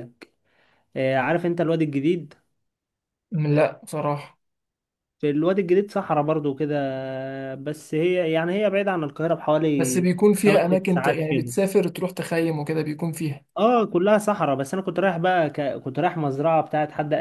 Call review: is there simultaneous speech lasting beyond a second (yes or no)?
yes